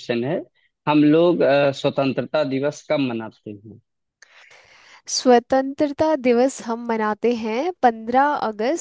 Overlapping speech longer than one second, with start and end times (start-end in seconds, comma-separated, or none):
none